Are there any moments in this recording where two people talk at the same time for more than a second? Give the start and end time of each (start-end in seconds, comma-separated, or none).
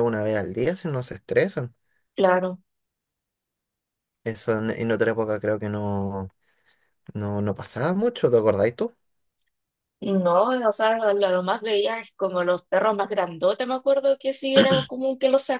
none